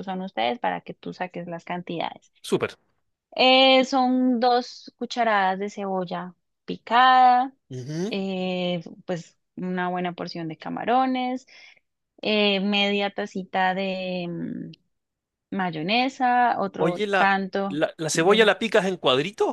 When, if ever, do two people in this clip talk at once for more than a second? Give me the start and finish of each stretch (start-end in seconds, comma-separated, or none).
16.8-18.5